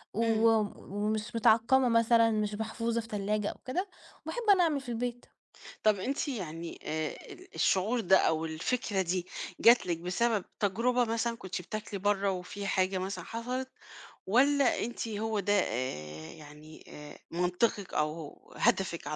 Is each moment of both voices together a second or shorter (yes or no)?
yes